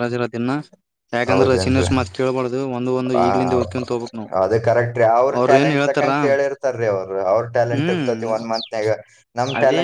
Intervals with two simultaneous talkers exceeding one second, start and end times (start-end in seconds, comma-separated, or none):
none